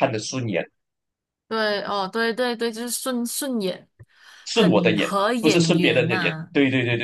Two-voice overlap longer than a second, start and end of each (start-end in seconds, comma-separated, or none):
4.5-6.5